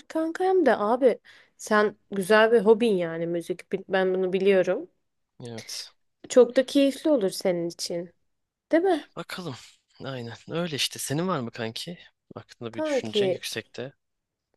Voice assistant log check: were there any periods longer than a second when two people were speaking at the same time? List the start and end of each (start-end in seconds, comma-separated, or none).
none